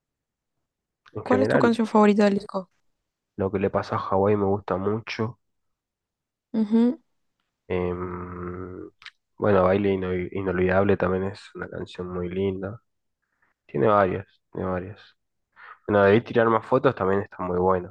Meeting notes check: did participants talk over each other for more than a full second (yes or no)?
no